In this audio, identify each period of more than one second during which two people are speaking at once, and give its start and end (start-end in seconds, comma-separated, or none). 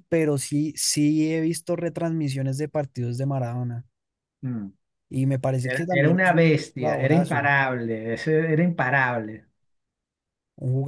5.6-7.5